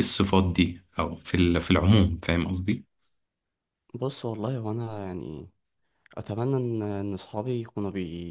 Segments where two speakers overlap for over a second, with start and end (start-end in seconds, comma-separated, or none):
none